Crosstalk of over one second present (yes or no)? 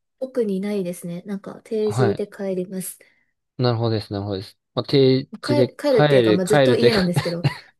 yes